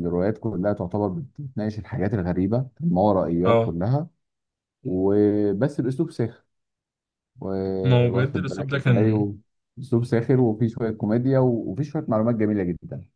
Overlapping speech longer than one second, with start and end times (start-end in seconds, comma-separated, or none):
7.8-9.3